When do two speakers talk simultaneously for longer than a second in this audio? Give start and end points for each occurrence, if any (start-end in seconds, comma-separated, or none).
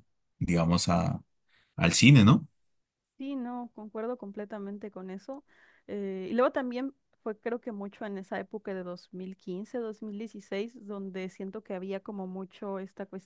none